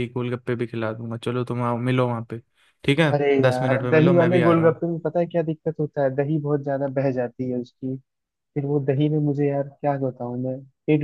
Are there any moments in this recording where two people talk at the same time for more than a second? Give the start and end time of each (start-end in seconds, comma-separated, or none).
3.1-4.8